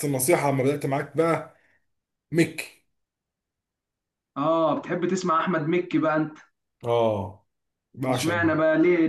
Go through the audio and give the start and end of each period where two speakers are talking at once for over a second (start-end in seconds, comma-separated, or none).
none